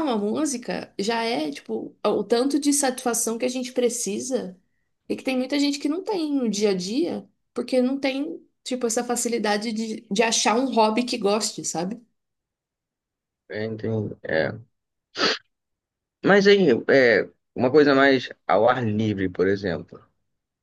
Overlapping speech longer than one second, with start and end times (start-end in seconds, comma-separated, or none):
none